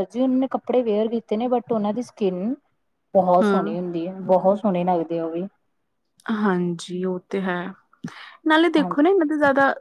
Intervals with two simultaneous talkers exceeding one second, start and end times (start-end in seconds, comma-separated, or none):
none